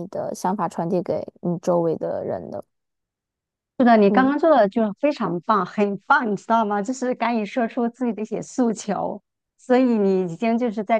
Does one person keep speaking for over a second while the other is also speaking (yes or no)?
no